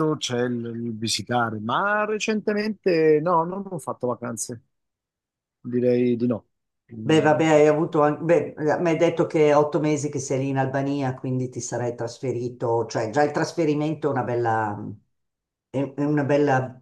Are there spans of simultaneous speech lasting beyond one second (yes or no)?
no